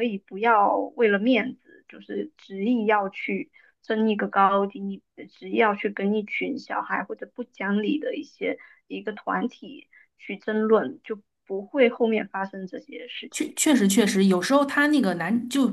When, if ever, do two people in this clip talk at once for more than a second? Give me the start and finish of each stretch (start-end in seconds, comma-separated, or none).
none